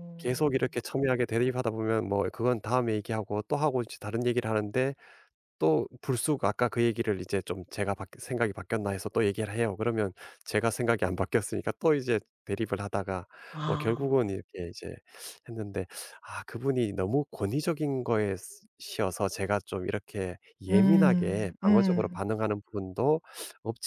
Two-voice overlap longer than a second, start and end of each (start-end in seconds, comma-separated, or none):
20.7-22.2